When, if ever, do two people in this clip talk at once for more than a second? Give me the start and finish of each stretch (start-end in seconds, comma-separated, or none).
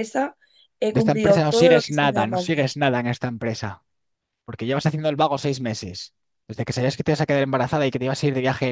0.9-2.6